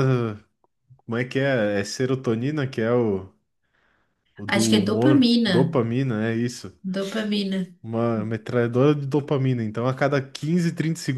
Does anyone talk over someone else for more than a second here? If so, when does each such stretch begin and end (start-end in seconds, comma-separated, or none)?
4.5-5.8